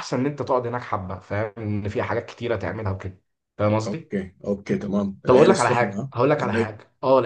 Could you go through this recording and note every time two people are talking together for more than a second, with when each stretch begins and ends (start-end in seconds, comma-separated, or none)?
5.2-6.8